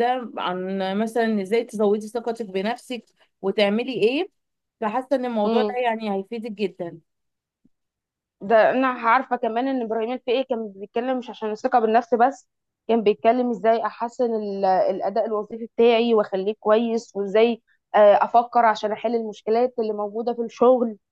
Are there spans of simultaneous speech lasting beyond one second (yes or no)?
no